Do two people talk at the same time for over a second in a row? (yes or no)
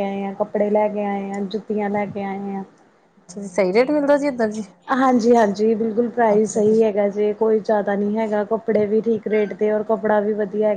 no